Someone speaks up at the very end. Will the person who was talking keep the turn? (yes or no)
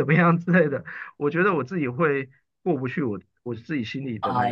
no